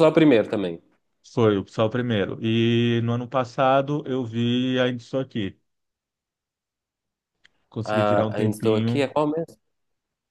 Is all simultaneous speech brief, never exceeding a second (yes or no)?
no